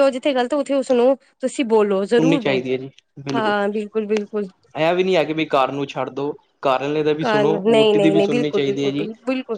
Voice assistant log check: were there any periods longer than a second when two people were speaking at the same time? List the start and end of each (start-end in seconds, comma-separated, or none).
7.2-9.1